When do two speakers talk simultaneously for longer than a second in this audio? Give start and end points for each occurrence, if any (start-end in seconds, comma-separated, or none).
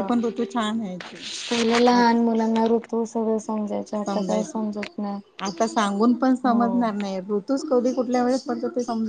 none